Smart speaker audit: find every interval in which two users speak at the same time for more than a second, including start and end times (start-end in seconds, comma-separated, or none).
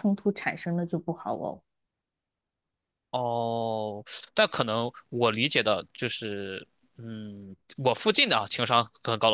none